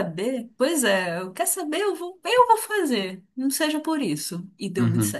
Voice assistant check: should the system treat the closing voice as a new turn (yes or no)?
yes